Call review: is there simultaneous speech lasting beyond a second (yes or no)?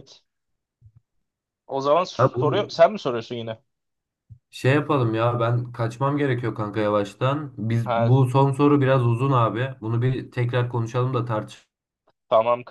no